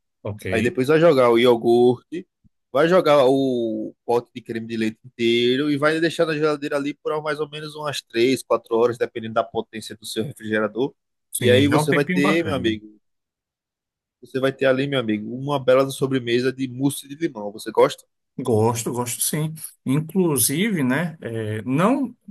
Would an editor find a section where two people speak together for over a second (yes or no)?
yes